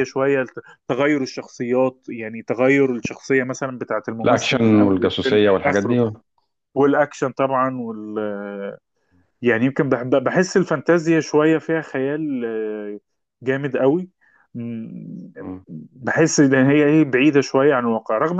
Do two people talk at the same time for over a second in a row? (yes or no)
yes